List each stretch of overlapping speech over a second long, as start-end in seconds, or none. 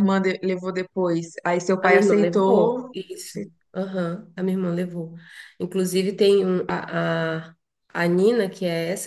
1.8-3.5